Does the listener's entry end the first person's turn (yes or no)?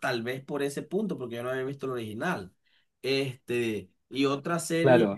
yes